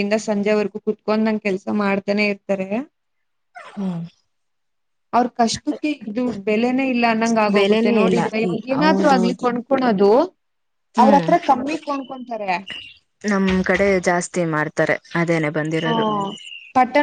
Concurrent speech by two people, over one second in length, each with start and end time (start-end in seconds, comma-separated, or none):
7.6-9.5